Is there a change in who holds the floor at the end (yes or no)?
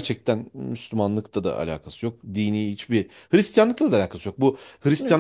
no